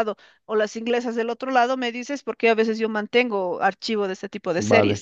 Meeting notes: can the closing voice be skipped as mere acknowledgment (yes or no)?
no